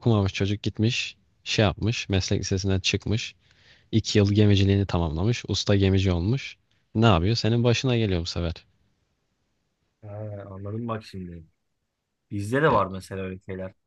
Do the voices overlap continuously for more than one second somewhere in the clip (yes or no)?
no